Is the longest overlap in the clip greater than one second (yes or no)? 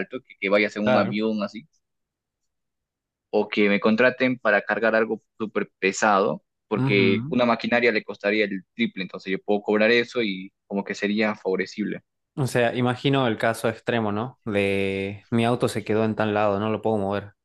no